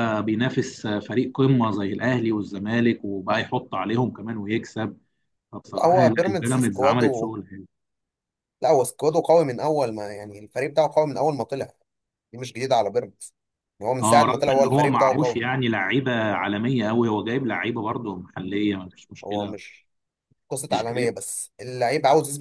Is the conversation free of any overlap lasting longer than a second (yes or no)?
no